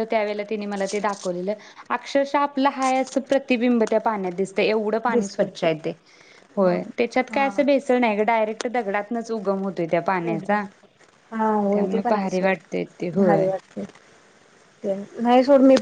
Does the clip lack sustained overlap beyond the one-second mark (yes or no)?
no